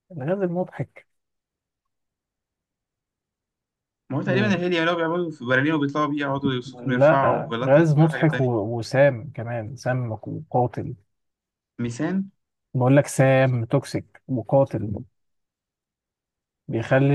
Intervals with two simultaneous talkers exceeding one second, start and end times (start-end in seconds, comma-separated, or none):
6.8-8.5